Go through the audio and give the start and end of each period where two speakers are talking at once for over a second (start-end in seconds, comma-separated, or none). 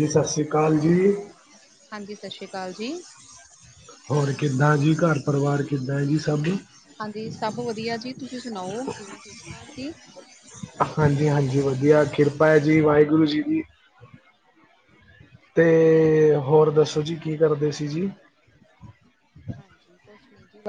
none